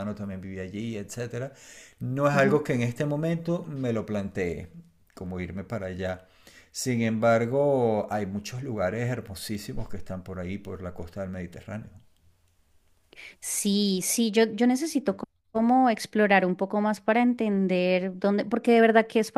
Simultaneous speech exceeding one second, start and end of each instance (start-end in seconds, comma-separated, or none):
none